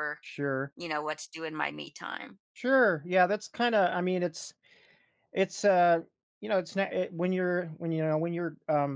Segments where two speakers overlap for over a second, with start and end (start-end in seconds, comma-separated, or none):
none